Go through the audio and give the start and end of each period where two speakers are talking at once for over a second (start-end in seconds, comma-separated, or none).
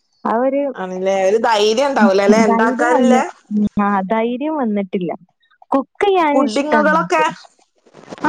none